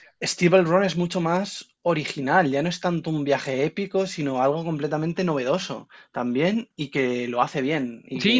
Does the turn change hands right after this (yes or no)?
yes